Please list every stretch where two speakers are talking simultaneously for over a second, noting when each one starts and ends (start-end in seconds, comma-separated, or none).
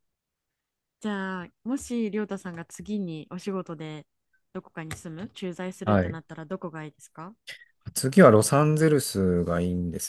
none